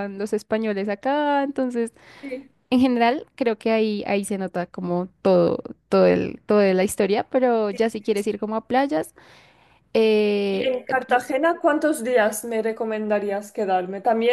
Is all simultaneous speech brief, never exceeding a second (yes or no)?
yes